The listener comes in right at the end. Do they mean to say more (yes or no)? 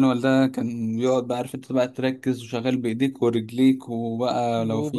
yes